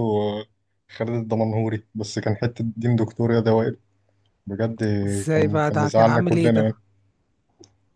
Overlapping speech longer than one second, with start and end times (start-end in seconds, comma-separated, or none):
5.3-6.7